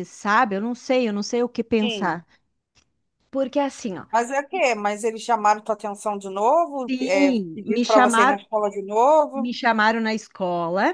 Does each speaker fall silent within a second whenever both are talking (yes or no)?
no